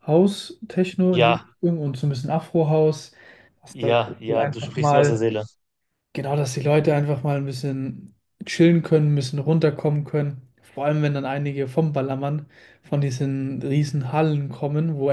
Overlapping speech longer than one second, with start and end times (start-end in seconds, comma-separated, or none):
3.7-5.2